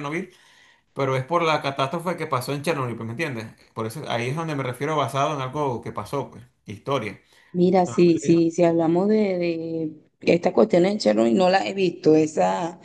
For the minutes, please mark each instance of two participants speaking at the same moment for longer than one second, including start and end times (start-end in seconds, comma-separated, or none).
none